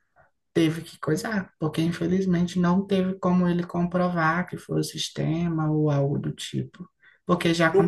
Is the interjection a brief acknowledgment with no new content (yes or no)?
no